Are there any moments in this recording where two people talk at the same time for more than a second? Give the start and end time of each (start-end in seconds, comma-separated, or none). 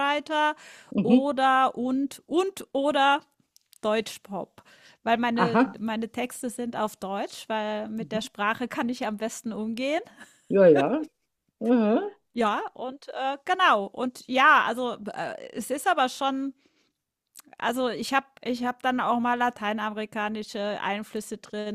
none